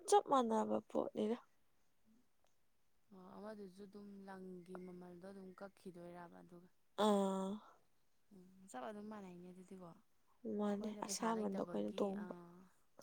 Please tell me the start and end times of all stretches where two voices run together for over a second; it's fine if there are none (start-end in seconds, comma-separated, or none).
10.6-12.3